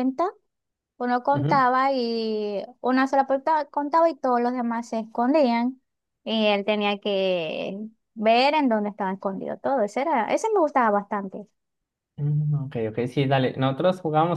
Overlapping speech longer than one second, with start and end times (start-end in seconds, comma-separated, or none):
none